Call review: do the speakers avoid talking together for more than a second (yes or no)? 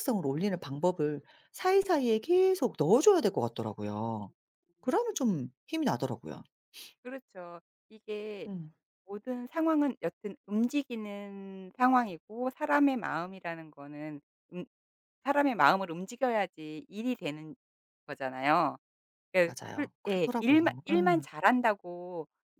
no